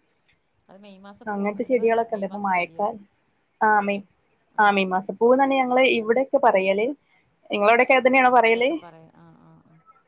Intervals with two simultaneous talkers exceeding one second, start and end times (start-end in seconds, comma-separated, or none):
1.3-2.9